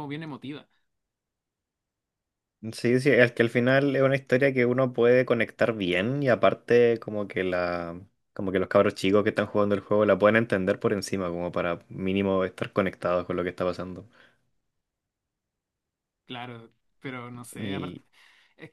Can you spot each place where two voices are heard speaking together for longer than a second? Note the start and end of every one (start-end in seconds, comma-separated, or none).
none